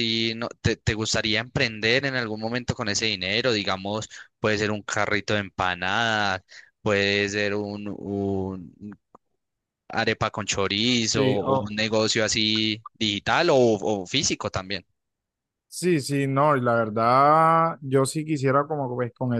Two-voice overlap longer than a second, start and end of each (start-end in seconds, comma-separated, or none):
none